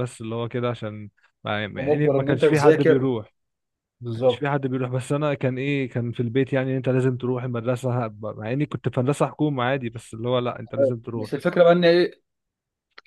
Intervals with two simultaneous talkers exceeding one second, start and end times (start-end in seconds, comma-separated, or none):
1.8-3.1